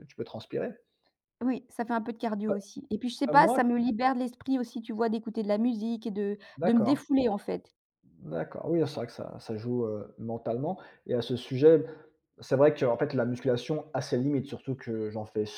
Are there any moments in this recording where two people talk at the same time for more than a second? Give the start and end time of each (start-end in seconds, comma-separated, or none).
none